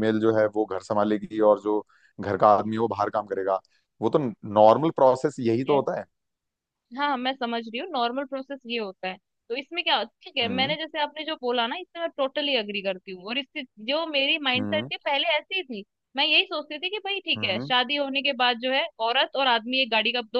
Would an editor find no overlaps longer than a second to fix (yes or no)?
yes